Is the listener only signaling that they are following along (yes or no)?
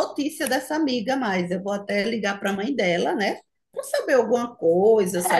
no